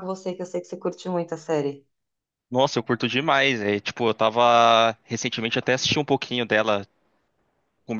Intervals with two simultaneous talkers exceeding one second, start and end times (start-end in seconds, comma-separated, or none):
none